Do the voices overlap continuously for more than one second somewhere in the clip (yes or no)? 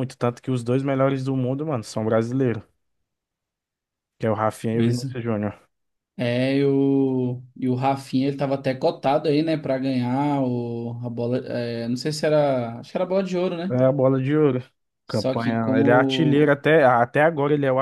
yes